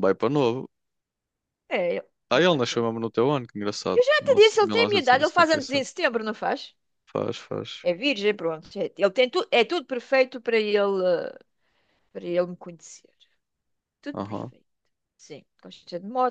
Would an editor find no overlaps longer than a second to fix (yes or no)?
no